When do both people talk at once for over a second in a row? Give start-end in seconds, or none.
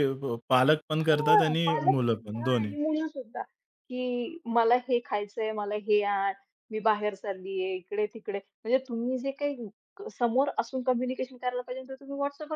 1.0-2.7